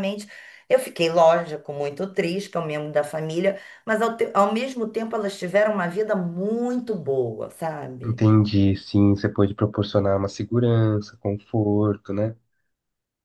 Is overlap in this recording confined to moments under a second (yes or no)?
yes